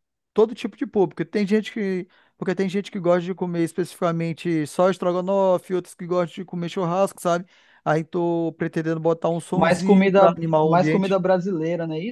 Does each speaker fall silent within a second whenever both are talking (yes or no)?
no